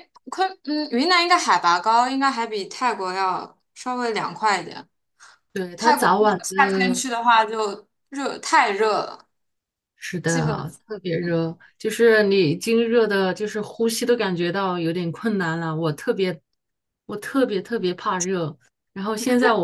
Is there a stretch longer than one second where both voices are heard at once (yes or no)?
yes